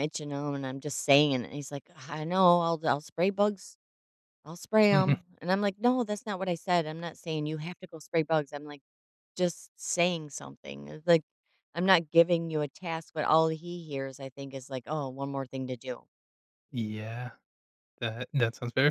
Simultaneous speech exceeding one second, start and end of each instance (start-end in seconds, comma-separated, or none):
none